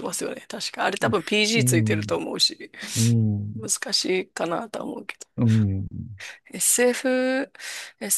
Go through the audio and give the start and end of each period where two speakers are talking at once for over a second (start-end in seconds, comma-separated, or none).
none